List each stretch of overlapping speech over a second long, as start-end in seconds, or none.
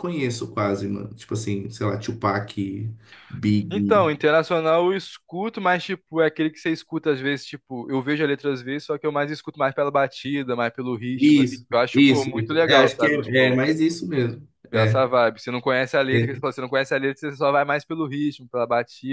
11.2-13.6